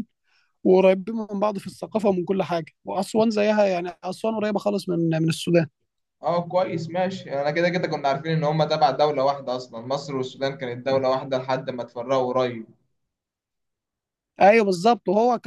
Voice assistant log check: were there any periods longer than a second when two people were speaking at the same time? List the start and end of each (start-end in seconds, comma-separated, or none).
none